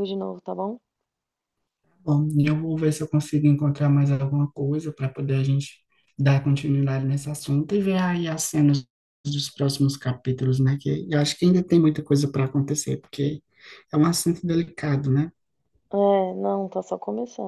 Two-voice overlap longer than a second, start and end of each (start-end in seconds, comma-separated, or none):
none